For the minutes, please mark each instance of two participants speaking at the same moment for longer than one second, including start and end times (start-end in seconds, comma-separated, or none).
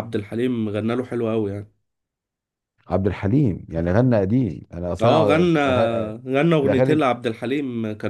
none